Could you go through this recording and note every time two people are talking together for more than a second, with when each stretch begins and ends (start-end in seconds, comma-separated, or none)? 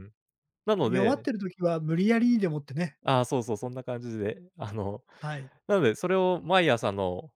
none